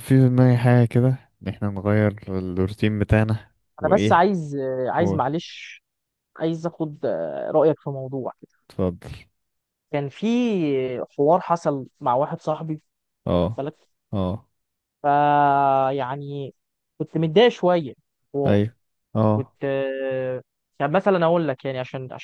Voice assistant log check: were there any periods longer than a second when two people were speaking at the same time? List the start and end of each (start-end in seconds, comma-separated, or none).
none